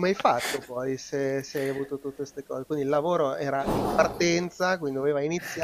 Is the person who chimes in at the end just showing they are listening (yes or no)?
no